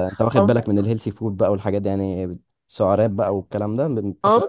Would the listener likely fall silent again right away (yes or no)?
no